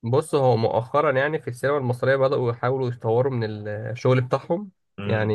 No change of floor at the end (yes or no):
yes